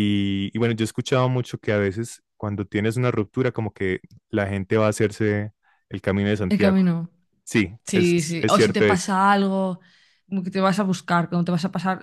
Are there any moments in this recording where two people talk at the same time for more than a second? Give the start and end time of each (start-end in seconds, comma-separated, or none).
7.8-9.1